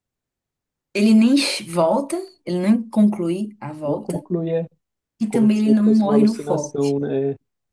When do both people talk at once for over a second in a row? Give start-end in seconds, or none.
5.3-6.8